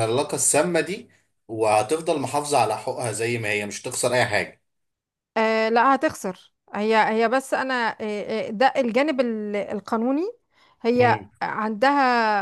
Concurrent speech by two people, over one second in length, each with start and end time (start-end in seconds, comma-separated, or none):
none